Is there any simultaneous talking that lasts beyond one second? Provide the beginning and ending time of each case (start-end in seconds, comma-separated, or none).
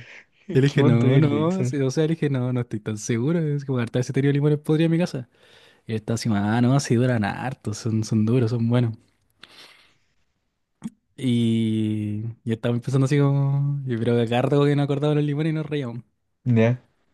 0.5-1.8